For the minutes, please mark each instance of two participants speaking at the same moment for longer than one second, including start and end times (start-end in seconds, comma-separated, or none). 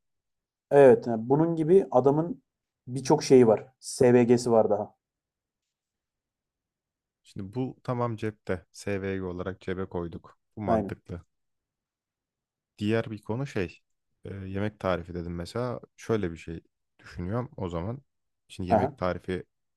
none